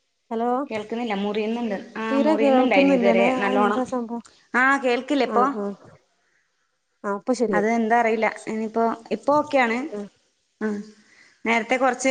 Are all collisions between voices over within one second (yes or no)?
no